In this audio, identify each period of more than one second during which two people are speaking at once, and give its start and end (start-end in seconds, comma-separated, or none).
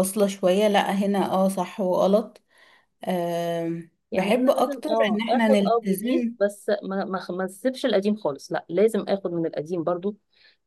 4.1-6.3